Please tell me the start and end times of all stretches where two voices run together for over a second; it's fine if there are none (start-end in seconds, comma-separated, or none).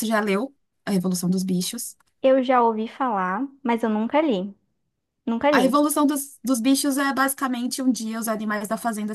none